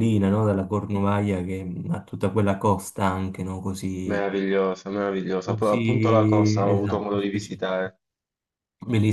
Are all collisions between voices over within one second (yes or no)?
no